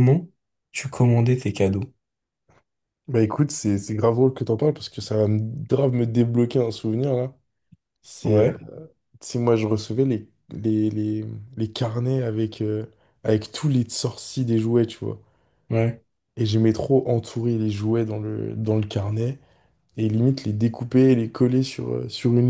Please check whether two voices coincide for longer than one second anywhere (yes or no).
no